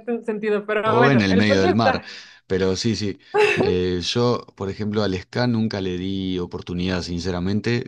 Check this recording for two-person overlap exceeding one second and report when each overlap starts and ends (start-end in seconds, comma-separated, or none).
0.8-2.0